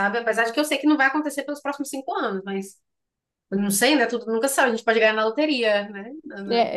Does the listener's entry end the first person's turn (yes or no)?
yes